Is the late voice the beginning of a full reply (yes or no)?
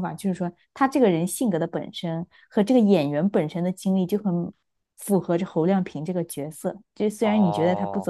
yes